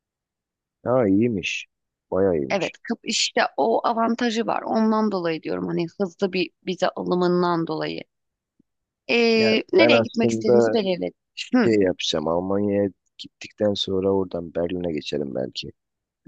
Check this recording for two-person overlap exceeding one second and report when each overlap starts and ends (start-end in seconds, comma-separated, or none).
9.3-10.8